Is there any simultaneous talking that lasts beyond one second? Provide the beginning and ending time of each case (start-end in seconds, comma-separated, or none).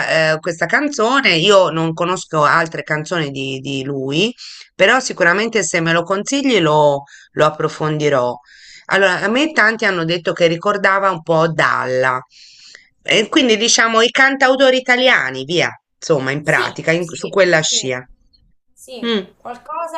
16.4-17.9